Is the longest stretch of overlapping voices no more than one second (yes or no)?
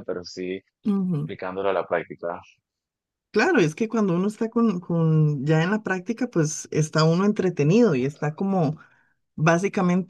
yes